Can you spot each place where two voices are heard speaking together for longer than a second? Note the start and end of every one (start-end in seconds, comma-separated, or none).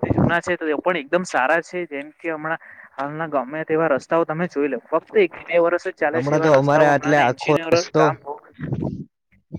6.1-8.0